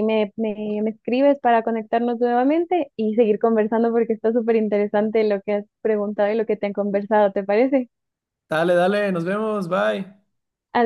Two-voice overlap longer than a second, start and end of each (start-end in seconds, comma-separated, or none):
none